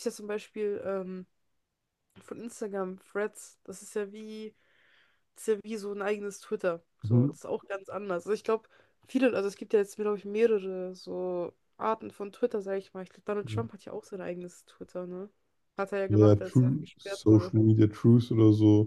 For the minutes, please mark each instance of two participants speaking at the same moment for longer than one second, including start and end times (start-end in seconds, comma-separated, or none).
16.1-17.5